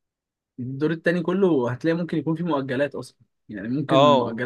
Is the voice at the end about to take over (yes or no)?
no